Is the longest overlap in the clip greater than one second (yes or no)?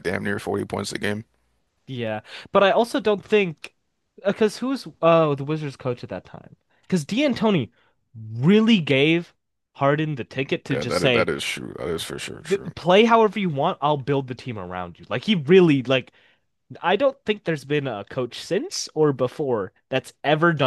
no